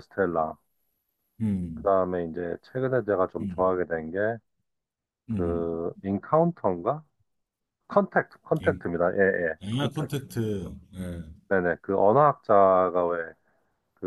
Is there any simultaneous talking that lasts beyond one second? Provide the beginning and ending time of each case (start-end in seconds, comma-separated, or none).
none